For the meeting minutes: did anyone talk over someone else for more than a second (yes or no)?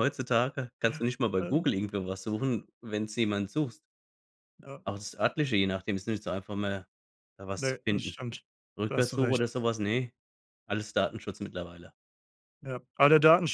no